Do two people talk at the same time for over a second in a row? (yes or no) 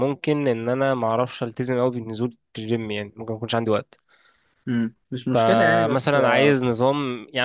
yes